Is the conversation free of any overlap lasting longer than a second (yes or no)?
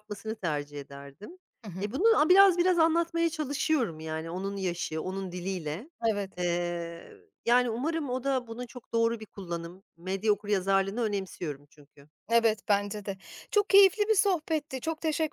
yes